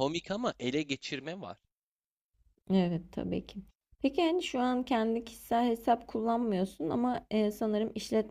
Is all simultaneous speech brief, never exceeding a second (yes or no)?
yes